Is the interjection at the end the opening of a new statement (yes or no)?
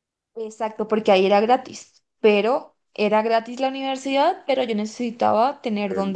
yes